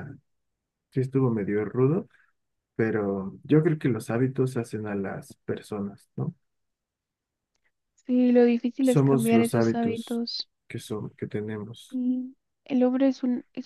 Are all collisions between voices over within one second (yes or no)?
no